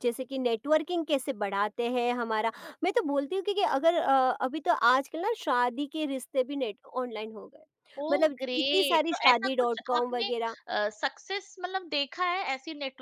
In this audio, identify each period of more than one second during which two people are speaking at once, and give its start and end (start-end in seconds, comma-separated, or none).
8.1-10.3